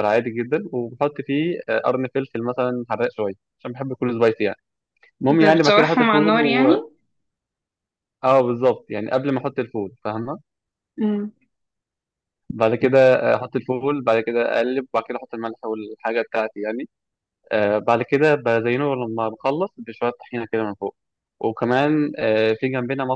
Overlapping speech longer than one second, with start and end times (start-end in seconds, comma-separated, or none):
5.3-6.7